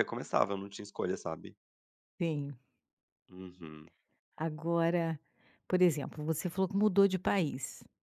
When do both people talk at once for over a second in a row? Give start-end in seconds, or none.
none